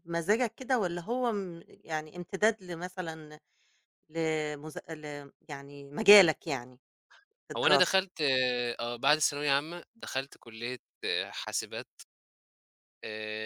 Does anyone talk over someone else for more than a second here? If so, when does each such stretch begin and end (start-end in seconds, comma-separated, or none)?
none